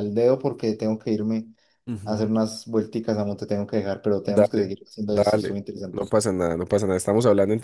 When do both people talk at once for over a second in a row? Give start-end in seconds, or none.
4.2-6.1